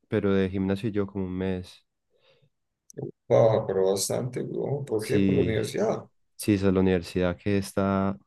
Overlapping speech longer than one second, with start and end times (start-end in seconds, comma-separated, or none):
none